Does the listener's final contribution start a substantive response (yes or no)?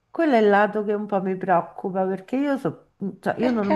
no